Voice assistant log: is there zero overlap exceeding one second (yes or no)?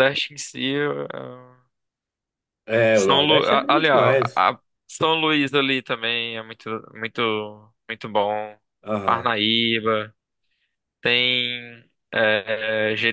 no